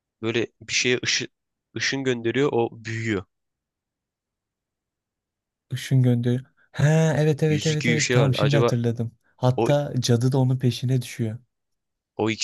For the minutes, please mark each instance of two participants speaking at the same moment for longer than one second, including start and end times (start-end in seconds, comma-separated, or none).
7.5-8.7